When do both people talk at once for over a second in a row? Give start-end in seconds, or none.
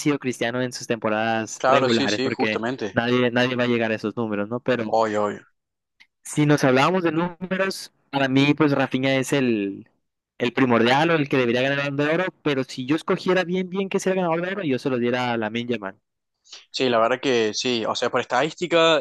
1.6-3.0